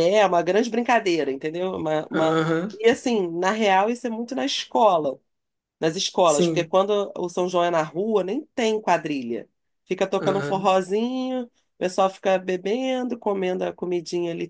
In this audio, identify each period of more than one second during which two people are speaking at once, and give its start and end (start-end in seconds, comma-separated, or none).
none